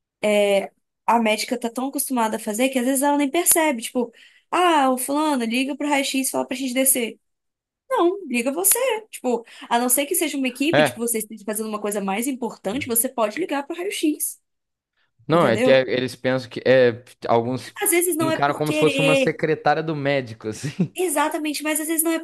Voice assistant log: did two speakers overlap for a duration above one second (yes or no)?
yes